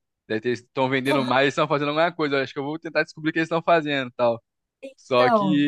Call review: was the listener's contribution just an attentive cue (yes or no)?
yes